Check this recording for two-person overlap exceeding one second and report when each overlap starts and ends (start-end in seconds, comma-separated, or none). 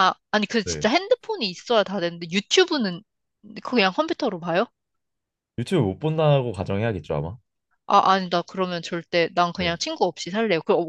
none